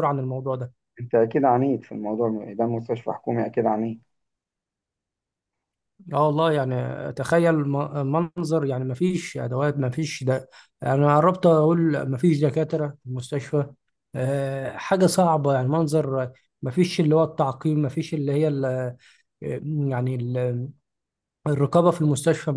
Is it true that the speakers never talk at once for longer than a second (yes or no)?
yes